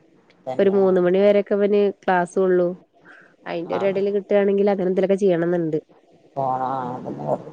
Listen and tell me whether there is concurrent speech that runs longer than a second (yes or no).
no